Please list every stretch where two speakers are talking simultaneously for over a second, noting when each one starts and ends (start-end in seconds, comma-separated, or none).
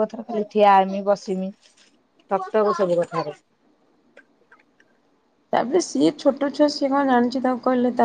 none